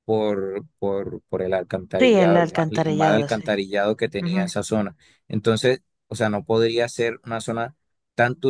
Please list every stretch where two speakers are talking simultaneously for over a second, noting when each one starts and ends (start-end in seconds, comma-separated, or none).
2.0-3.5